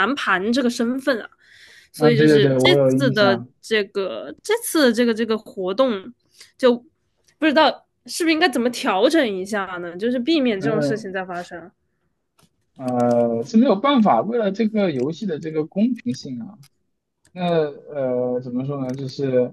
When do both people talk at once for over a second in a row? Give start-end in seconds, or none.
2.0-3.5